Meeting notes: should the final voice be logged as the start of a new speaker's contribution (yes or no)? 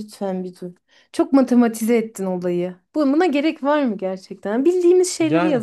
no